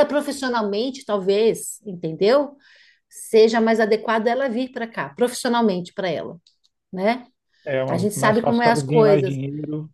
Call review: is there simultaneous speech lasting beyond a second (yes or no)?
yes